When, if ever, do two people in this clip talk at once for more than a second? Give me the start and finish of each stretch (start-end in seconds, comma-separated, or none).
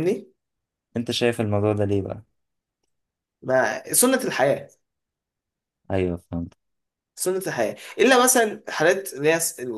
none